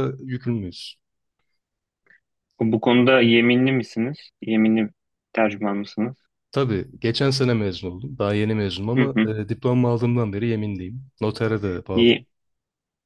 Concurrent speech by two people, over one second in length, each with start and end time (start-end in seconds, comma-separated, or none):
none